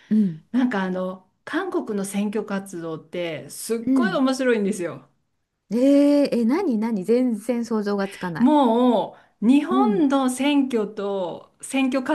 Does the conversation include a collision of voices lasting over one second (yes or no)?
no